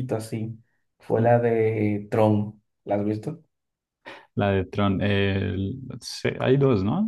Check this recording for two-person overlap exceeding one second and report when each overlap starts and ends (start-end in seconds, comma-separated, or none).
none